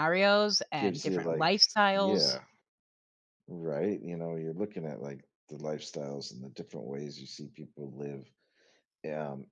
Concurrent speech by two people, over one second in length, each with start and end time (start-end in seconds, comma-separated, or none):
0.8-2.4